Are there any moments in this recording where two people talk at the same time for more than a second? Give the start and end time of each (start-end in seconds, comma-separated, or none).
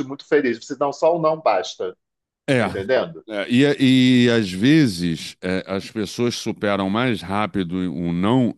none